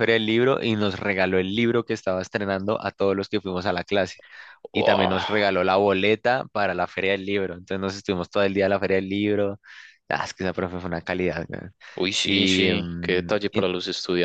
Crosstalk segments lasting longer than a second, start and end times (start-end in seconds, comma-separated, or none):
12.2-13.6